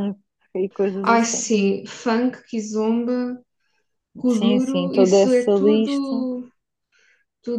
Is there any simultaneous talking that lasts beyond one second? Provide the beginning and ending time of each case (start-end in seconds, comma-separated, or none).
4.3-6.2